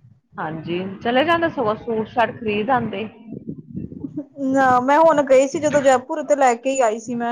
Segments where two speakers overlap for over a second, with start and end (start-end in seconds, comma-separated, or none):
none